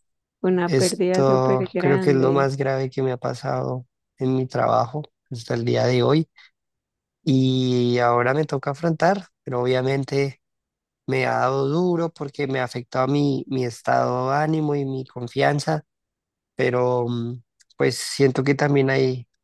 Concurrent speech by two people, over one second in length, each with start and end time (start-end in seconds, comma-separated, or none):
0.7-2.5